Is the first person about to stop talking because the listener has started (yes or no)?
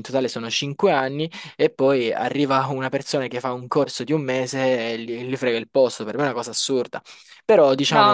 no